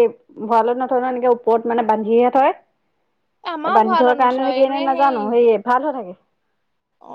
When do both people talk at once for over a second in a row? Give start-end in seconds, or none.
3.5-5.3